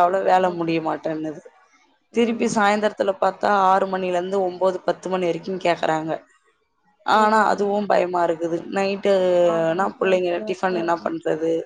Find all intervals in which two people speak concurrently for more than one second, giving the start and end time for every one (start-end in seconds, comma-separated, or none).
9.6-11.0